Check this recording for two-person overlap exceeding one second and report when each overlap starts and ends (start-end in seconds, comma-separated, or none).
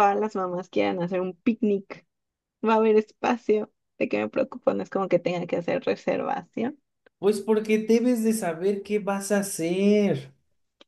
none